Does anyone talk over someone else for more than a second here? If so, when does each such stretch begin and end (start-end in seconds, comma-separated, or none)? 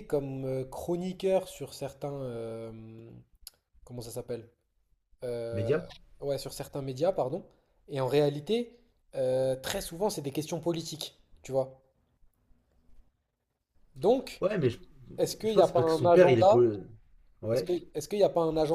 15.4-16.7